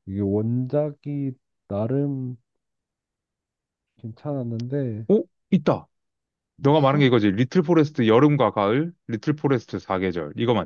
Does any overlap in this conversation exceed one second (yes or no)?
no